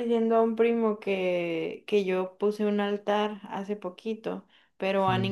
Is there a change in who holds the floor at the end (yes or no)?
no